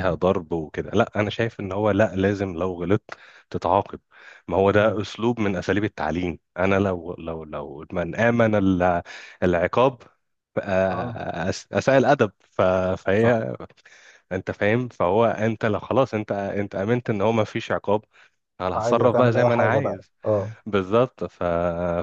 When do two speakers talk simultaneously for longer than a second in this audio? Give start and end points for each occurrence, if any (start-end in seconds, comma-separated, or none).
18.7-20.1